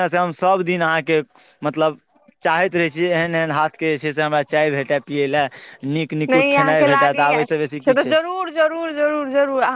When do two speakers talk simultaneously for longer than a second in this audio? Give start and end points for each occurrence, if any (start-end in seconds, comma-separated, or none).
6.3-8.1